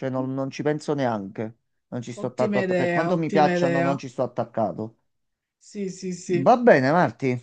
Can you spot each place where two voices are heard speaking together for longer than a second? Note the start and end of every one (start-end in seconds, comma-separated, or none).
2.1-4.0